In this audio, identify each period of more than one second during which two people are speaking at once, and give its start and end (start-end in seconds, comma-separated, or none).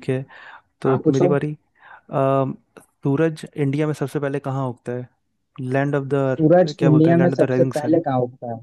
6.3-8.0